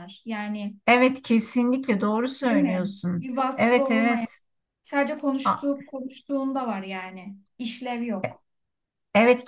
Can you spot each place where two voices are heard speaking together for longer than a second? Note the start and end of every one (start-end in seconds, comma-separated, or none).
2.4-4.3